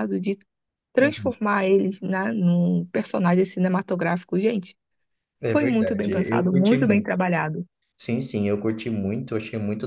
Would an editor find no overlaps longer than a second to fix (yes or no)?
no